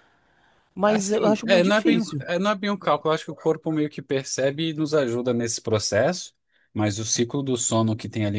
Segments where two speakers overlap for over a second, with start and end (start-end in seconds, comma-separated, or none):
0.8-2.2